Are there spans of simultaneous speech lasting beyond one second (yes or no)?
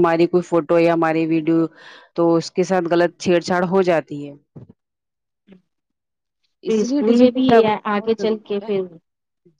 yes